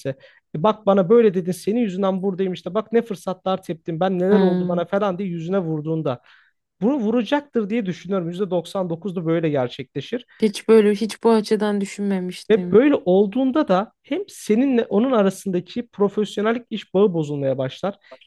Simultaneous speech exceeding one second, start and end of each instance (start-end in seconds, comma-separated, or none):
none